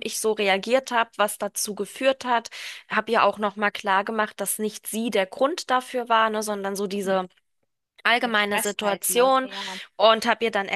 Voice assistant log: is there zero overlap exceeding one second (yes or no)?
no